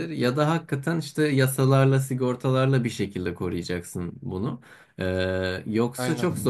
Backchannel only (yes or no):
yes